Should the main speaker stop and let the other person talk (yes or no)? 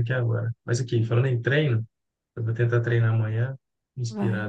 no